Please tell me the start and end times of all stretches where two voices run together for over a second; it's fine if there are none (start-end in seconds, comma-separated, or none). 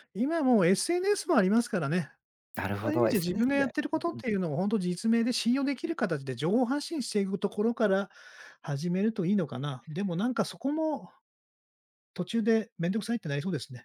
2.8-4.4